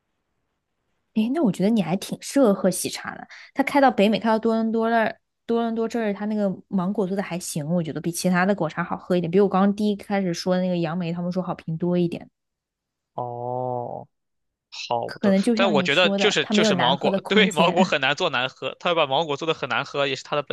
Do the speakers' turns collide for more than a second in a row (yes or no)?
yes